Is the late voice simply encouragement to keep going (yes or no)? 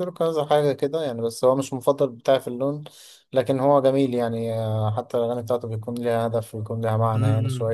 no